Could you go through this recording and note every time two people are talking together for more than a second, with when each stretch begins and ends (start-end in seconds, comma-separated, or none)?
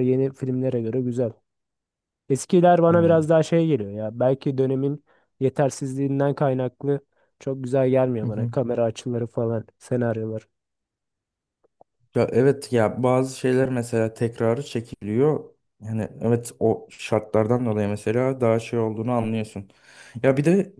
none